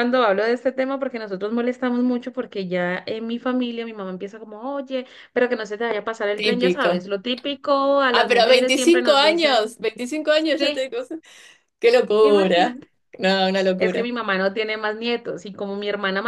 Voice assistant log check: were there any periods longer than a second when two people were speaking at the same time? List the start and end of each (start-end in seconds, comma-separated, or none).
8.1-9.6